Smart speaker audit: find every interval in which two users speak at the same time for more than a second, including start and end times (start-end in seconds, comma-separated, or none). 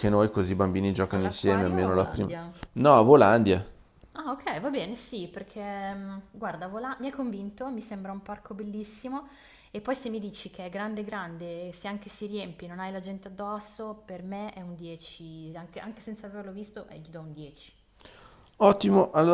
1.1-2.3